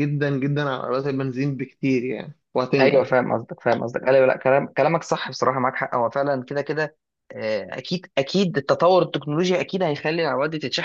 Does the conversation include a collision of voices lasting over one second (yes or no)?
no